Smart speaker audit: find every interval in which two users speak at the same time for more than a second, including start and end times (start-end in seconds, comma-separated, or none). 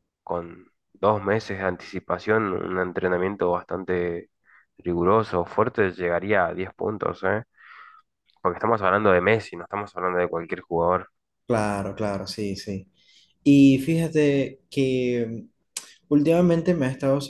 none